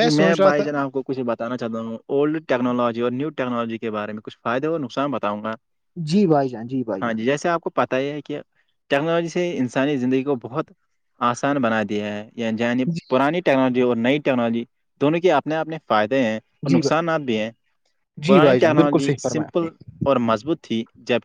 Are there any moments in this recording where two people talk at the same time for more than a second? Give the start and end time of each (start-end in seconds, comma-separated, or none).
18.3-19.7